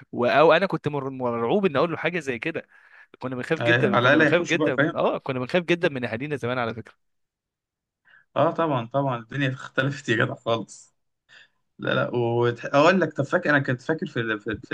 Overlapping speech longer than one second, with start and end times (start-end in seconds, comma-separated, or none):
3.6-5.0